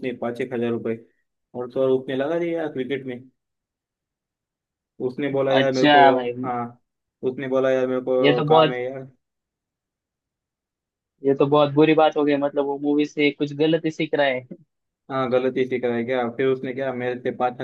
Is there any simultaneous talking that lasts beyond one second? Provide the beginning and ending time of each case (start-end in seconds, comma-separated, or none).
none